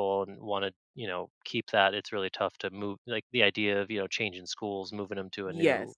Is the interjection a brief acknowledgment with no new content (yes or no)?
yes